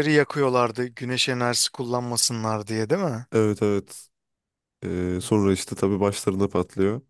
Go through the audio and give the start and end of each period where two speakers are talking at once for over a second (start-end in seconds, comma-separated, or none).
none